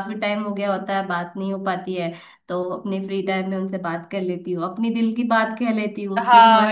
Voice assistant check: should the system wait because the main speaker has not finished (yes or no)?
no